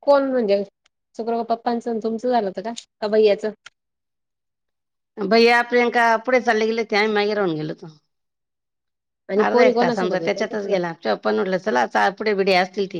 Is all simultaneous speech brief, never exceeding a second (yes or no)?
no